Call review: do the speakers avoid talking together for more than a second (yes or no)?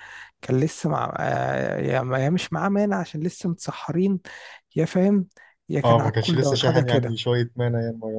no